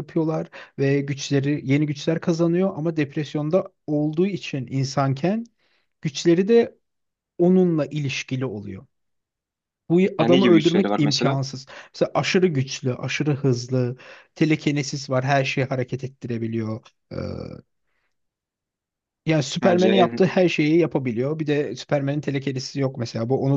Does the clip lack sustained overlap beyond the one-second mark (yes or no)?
no